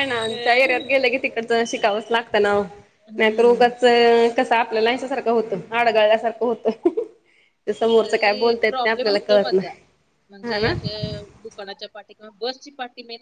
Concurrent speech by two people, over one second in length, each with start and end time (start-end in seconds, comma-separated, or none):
8.0-9.7